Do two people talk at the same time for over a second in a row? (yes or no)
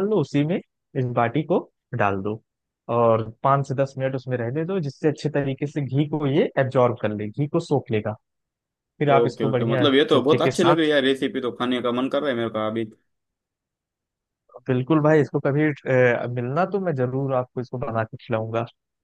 yes